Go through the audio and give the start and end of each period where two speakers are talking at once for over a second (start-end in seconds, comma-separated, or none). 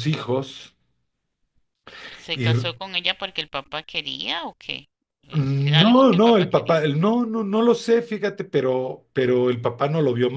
5.3-6.8